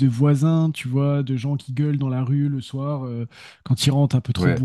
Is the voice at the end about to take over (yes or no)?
no